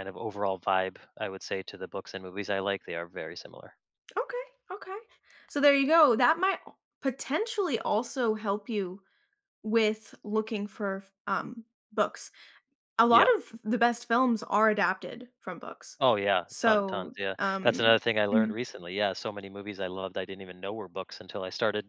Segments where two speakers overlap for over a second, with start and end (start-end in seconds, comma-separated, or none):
16.5-18.5